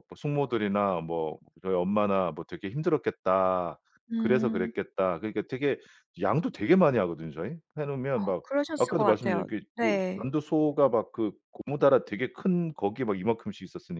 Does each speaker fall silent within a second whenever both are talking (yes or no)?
no